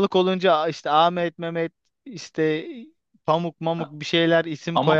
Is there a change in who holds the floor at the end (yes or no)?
yes